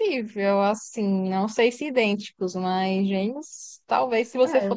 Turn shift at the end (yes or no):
no